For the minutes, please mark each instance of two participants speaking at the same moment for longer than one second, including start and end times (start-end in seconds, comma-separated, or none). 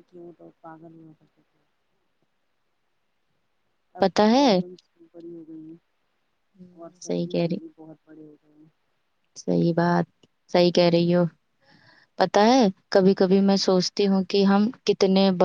none